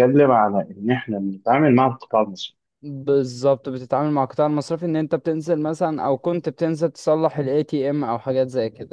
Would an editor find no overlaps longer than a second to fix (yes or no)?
yes